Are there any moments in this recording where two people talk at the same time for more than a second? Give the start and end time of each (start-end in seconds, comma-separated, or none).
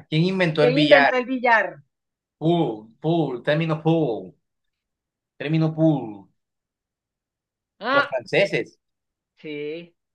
none